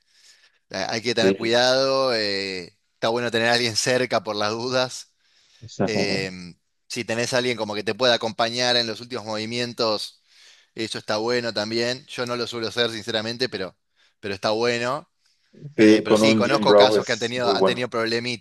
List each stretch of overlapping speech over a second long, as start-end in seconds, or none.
15.8-17.9